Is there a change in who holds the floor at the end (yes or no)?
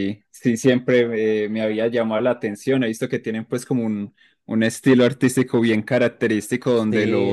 no